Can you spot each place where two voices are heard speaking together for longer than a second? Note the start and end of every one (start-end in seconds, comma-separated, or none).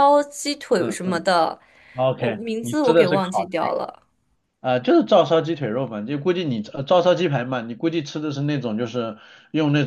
2.1-3.5